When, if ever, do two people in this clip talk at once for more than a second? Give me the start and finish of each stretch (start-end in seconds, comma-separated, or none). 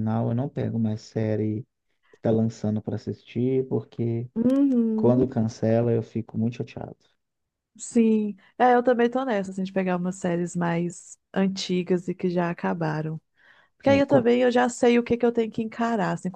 none